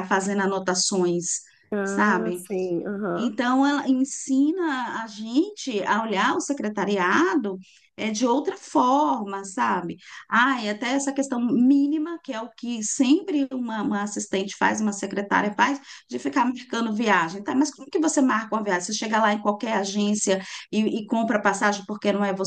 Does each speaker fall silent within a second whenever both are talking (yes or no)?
yes